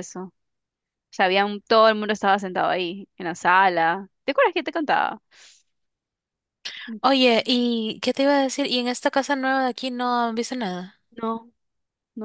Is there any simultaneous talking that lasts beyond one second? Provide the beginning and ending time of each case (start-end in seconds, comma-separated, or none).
none